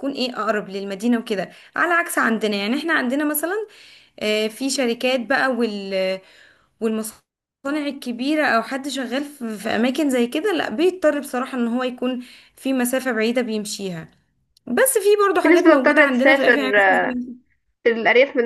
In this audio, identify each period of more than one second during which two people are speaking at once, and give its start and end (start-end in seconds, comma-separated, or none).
15.4-17.0